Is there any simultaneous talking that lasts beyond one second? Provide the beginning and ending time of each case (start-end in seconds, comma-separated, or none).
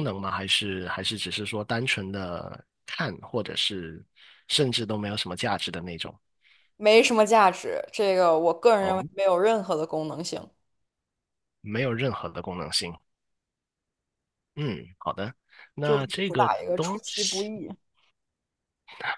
15.8-17.5